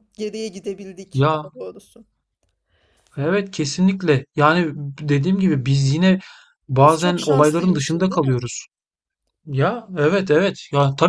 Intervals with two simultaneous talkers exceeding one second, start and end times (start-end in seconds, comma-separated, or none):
6.8-8.4